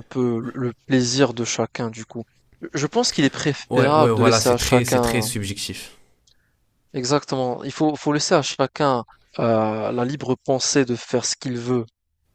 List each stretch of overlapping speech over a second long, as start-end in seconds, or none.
3.7-5.3